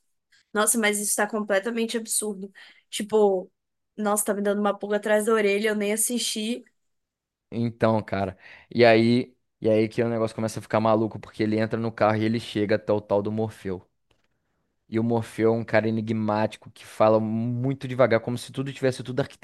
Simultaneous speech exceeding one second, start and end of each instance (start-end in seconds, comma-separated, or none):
none